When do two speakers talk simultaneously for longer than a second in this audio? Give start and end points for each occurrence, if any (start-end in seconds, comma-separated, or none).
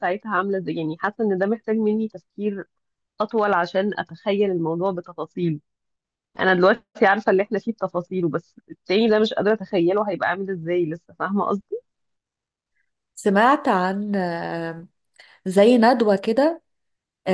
none